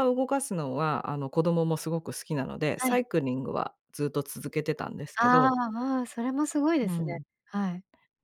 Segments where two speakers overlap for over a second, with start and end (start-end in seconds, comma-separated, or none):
none